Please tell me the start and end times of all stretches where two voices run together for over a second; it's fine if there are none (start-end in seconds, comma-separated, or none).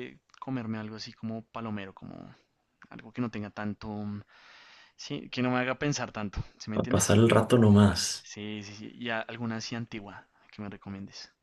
none